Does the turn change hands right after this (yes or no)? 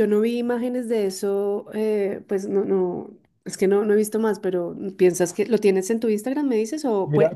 yes